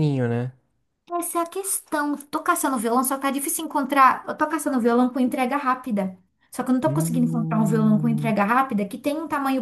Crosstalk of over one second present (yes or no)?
yes